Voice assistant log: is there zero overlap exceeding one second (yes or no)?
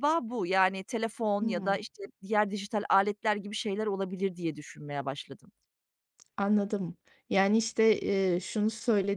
yes